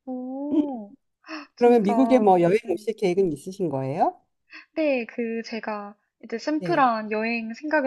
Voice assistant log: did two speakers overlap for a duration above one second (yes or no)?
no